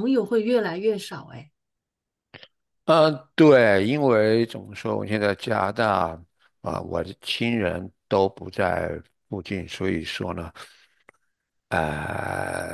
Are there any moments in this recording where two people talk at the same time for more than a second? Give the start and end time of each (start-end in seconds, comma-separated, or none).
none